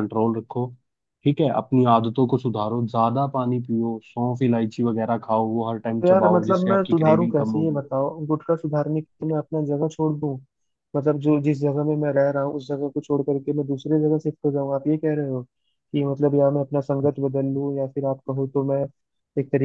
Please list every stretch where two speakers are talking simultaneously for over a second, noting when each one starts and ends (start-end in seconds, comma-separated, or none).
6.0-7.8